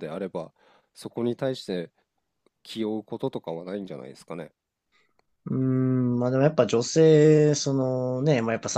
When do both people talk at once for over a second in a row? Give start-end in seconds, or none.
none